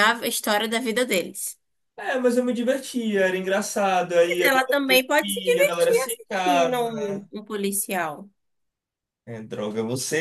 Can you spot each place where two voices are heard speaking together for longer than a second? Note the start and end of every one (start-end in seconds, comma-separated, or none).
4.2-7.2